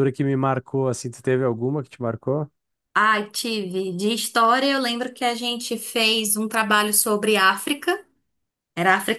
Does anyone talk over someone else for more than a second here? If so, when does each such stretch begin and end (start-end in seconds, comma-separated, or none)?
none